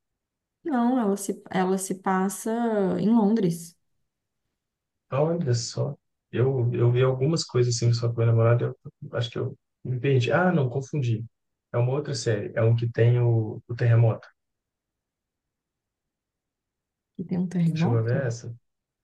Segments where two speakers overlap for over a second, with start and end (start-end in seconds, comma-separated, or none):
none